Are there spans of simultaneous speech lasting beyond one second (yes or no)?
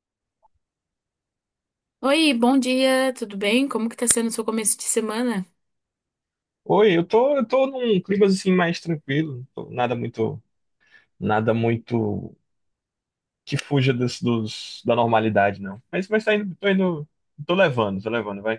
no